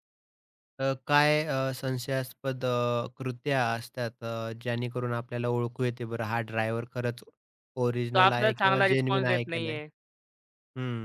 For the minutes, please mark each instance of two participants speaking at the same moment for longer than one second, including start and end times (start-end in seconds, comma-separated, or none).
8.1-9.8